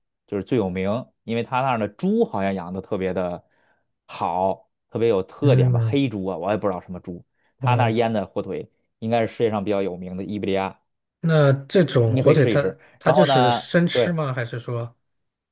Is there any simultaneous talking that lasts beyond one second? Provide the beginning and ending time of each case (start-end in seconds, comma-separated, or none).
12.0-14.2